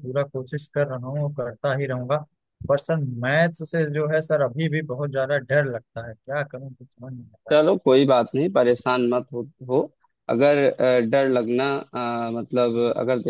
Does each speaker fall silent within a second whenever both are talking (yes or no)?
yes